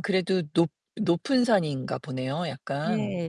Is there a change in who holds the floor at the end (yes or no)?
yes